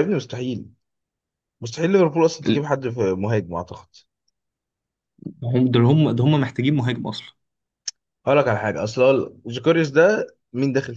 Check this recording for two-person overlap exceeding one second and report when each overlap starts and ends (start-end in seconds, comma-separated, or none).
none